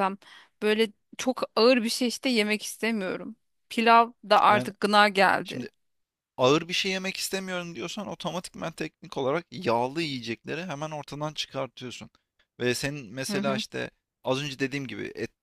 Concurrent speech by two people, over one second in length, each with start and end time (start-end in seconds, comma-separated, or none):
none